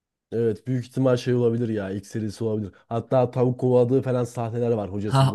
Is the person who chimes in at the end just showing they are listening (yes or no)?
no